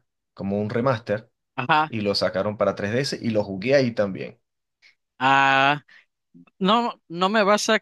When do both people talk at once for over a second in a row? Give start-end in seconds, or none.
none